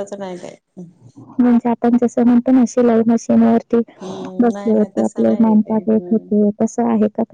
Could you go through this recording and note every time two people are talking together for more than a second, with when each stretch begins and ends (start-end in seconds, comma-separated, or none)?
4.4-6.4